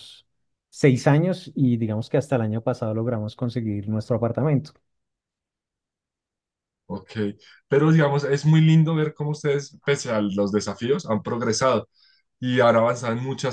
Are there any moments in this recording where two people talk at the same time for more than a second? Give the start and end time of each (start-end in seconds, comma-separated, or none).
none